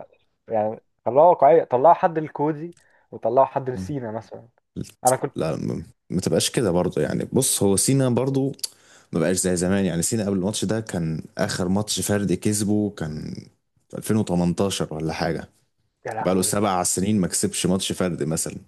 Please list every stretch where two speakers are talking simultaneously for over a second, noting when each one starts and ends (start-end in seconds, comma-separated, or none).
none